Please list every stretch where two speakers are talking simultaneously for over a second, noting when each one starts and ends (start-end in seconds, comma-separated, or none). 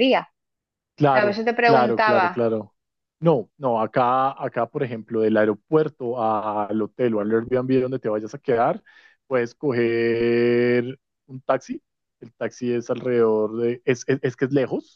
1.1-2.5